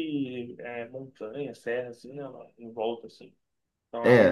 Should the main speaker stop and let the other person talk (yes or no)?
yes